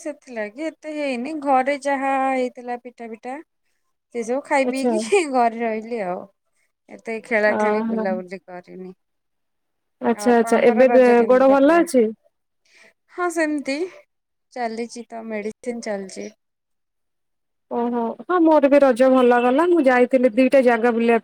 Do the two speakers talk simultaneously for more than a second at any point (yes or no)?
yes